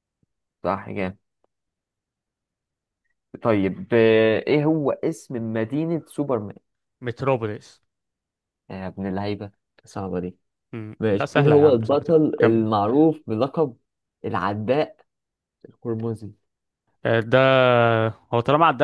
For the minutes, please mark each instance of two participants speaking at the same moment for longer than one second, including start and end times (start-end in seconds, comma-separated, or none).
11.0-12.7